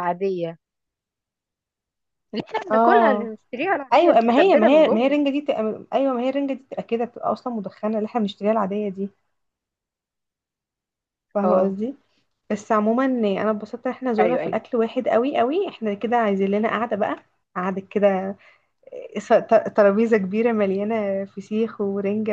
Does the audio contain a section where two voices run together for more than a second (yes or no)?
yes